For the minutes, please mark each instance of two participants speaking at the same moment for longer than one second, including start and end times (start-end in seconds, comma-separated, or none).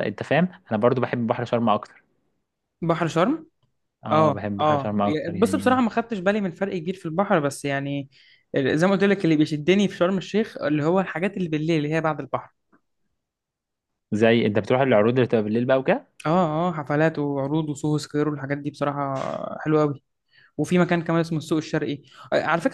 4.1-5.9